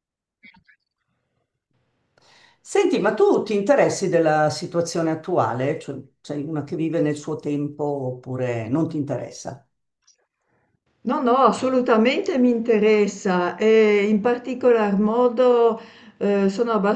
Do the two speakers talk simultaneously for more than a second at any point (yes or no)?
no